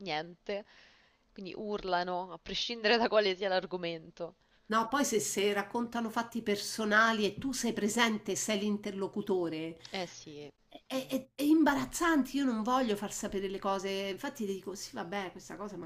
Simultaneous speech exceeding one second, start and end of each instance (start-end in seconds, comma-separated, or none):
none